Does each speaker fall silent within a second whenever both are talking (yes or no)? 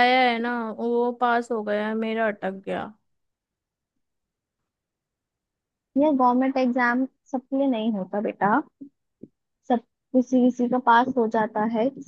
yes